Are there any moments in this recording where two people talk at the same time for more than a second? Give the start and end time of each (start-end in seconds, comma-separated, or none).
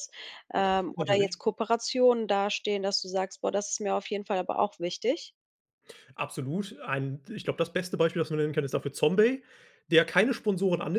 none